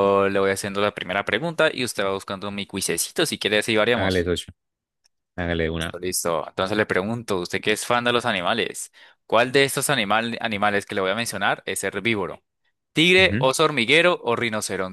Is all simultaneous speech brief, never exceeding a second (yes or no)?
yes